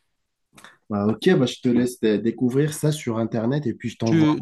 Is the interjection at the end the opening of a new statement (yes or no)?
yes